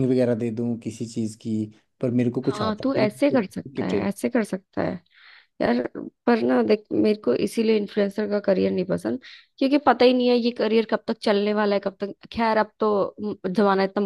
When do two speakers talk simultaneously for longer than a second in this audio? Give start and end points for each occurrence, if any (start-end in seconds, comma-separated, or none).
2.5-4.1